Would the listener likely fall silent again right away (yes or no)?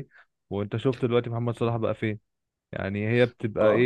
no